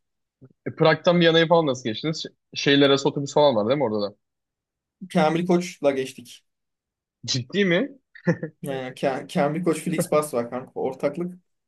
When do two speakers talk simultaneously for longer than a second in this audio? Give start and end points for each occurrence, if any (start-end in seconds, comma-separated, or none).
none